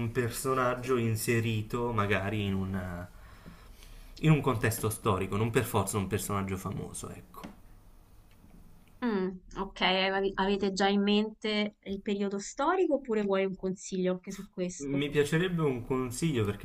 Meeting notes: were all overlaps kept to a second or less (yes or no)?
yes